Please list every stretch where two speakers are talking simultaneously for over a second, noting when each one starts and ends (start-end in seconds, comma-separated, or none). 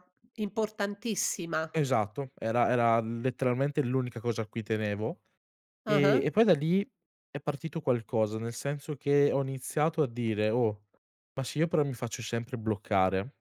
none